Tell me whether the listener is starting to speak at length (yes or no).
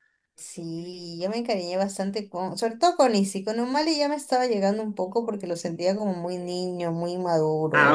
yes